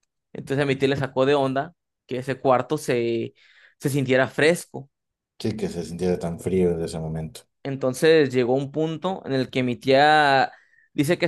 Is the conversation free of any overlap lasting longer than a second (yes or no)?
yes